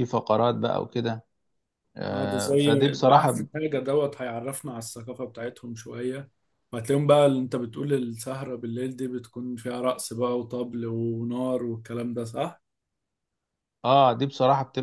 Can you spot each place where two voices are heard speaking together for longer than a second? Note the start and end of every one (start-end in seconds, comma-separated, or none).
2.1-3.5